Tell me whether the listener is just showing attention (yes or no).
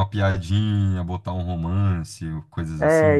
no